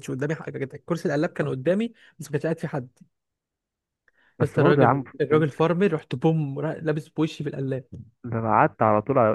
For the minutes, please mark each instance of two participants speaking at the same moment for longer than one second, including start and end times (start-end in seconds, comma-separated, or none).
4.4-5.6